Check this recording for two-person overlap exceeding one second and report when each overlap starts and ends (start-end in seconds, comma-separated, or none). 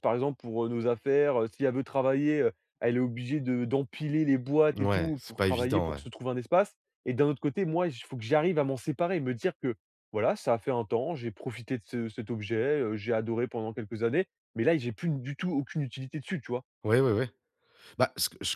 4.8-6.0